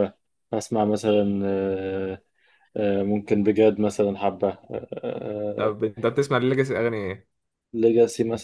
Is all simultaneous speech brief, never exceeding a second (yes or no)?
yes